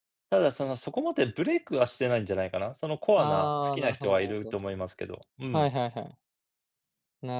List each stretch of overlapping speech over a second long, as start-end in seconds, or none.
3.1-4.6